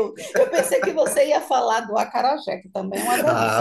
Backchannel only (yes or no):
no